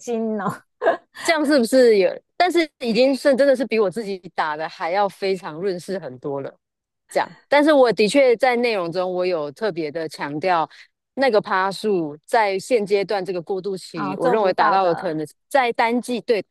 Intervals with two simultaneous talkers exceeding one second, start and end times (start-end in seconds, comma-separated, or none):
13.9-15.2